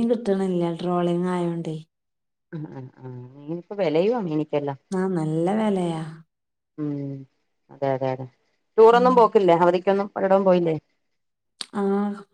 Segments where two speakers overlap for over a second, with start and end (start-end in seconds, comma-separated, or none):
none